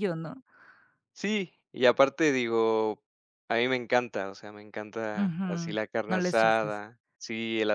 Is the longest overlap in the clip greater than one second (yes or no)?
yes